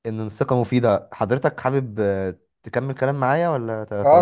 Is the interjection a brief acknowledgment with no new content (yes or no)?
no